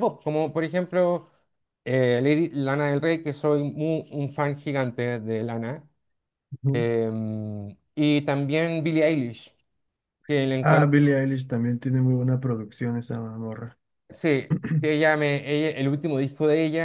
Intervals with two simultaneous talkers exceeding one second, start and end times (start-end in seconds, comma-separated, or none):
none